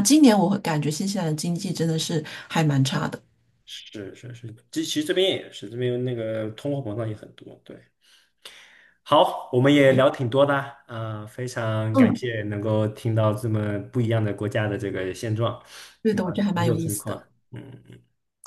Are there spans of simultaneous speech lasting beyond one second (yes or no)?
yes